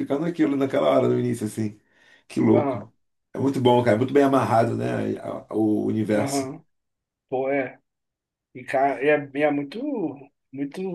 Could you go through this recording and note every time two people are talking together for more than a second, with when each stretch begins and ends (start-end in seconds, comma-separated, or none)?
none